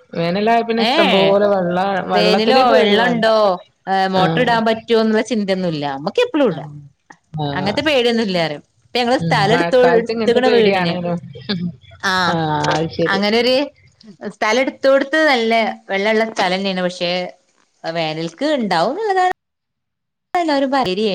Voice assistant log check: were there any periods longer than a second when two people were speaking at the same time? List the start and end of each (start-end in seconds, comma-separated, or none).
9.2-10.9